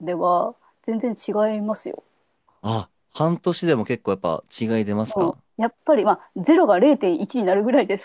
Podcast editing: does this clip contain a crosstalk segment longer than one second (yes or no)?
no